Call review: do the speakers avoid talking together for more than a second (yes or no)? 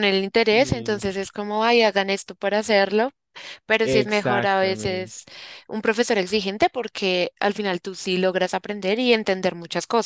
no